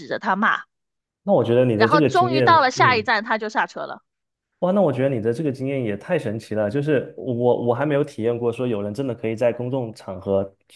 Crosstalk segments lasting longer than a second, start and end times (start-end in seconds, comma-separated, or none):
1.8-3.1